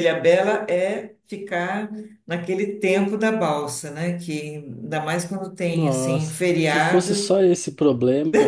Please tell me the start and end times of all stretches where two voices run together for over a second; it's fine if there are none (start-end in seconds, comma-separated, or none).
5.7-7.4